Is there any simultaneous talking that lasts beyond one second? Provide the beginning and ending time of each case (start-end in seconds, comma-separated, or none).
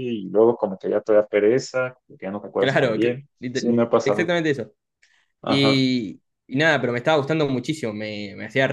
2.6-4.3